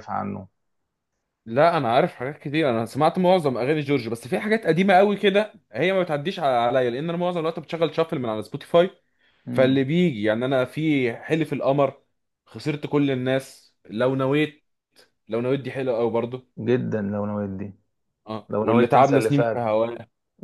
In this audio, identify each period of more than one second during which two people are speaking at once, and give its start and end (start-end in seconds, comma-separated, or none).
18.5-19.7